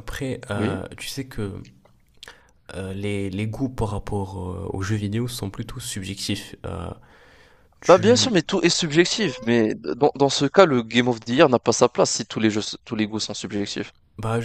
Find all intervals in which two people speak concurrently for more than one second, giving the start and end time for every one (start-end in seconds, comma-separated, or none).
none